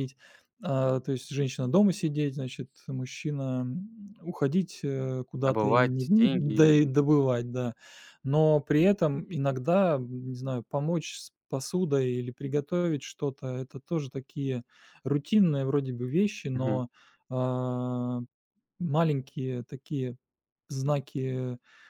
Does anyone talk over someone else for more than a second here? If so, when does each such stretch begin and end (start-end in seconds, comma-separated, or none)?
5.5-6.8